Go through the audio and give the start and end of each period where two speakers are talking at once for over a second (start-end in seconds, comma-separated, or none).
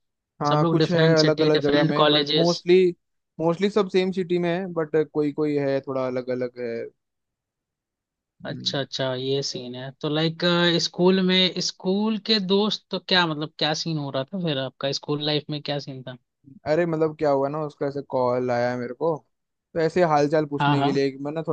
0.5-2.6